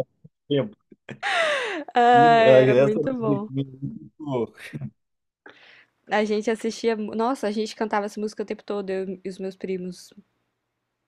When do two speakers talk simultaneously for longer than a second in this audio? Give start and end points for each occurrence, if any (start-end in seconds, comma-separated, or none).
2.1-3.5